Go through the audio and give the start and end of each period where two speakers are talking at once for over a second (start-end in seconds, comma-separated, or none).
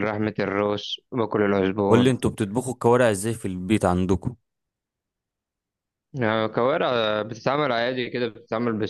none